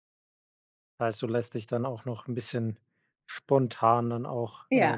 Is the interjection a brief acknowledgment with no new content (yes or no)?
yes